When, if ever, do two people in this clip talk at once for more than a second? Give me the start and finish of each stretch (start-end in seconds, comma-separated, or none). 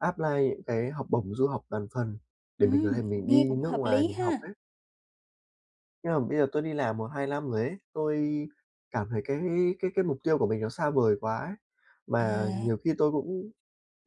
2.6-4.5